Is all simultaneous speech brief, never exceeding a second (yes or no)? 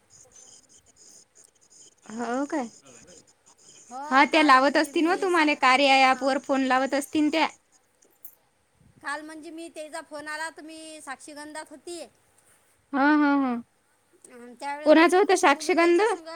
no